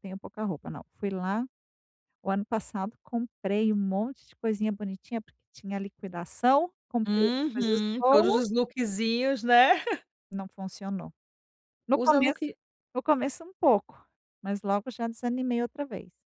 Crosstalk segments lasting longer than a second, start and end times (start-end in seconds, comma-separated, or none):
7.1-8.4